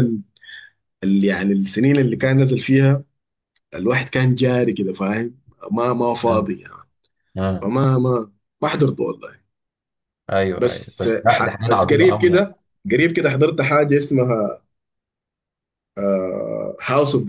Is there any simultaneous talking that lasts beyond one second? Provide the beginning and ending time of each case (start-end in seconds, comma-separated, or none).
10.6-12.5